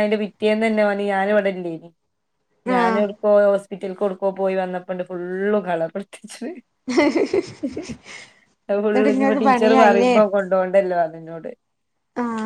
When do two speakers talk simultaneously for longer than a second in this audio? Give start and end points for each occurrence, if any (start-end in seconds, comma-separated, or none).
8.9-10.2